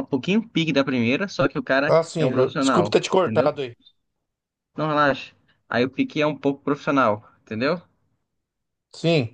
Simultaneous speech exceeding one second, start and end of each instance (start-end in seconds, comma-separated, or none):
1.9-3.5